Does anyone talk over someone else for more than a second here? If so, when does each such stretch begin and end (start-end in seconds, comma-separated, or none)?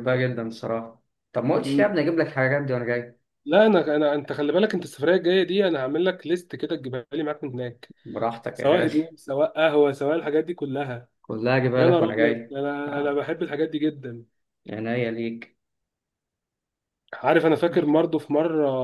11.8-13.2